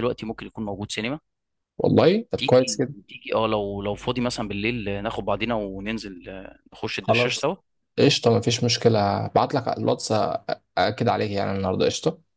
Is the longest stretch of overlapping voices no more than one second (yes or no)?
yes